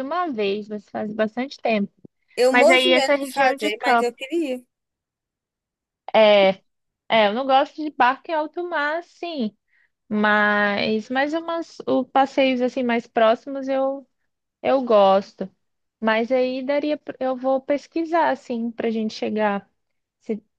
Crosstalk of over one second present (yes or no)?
yes